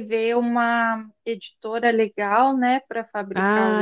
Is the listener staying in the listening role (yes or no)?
no